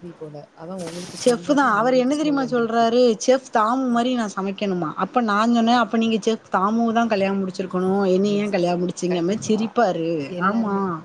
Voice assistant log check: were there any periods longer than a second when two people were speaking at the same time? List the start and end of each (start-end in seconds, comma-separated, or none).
1.2-2.9